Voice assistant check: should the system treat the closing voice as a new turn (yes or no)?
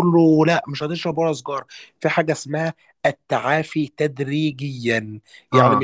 no